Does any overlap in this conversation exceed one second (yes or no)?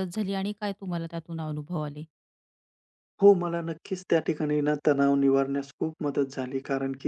no